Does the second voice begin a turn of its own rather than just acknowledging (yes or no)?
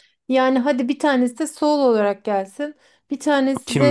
no